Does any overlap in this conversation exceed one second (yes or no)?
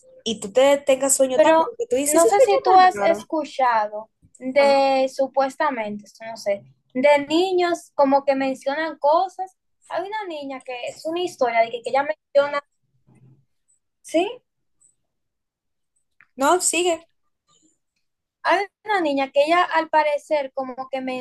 yes